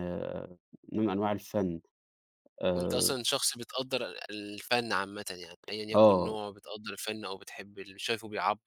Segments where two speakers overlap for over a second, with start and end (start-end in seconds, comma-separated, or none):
none